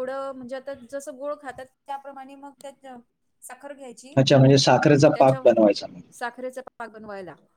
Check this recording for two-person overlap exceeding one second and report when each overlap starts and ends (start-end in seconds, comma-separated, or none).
none